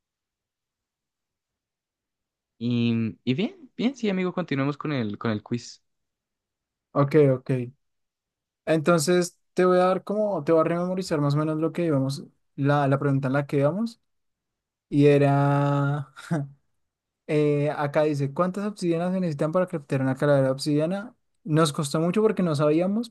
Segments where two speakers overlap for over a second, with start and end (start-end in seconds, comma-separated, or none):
none